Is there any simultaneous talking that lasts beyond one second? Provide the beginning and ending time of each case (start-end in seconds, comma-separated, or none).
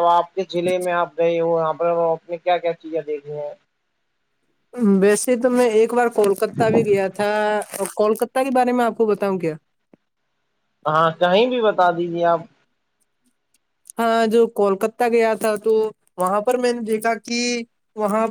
none